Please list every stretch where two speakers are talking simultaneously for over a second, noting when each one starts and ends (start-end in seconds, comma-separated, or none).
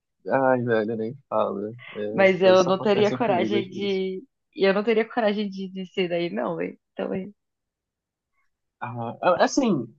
2.1-4.0